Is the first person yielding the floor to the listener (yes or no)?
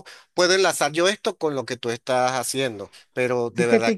yes